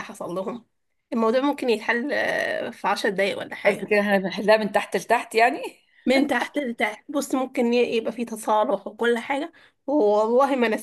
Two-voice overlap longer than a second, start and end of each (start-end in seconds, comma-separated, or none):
none